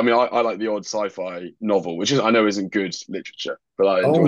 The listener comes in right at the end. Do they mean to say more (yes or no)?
yes